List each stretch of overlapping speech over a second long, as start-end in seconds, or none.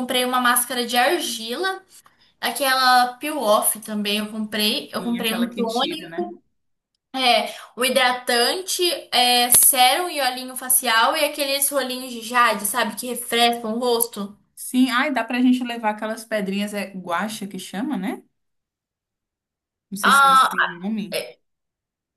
5.0-6.3